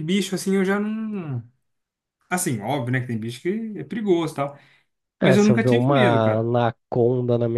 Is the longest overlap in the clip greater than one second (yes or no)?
yes